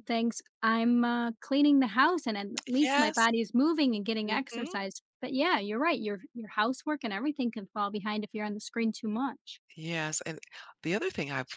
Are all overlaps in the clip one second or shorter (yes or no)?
yes